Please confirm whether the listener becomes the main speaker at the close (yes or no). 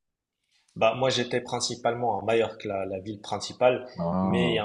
no